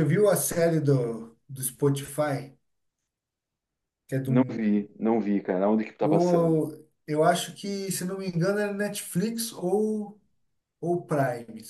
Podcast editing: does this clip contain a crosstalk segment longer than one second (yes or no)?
no